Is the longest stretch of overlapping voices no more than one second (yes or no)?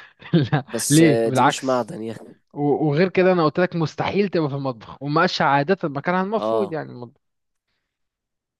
no